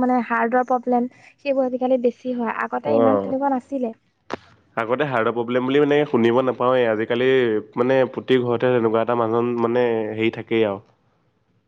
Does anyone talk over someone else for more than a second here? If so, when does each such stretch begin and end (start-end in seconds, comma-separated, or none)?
none